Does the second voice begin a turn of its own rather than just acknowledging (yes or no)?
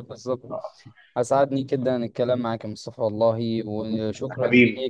no